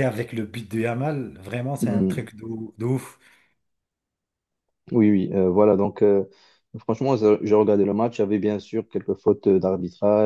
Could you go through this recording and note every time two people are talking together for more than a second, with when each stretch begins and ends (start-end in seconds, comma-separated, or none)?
none